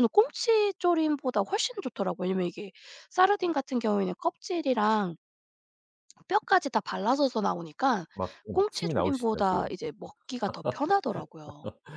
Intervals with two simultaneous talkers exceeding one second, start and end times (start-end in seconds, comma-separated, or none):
8.5-9.7